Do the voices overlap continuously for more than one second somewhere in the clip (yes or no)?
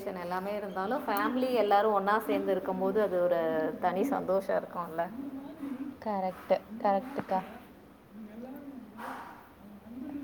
no